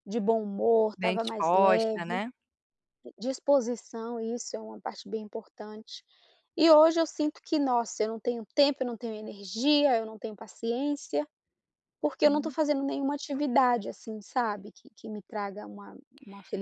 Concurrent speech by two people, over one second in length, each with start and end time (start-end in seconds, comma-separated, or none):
0.9-2.2